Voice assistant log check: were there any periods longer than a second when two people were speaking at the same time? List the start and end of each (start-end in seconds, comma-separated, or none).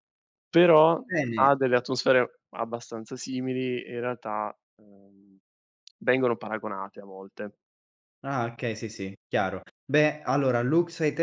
none